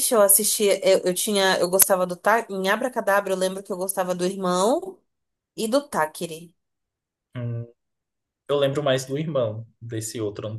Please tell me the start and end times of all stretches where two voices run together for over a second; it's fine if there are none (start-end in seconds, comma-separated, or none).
none